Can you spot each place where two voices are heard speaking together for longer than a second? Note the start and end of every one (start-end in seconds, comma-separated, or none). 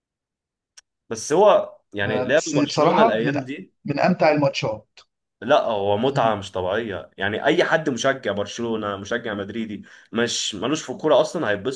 2.1-3.3